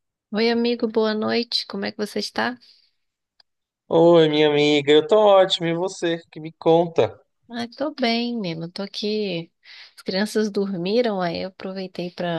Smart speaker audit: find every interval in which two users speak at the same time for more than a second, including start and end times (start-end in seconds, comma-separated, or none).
none